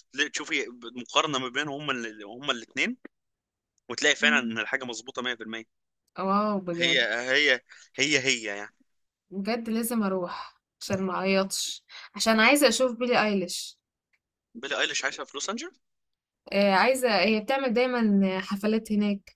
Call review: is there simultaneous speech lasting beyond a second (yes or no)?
no